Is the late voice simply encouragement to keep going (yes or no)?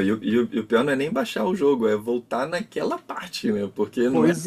no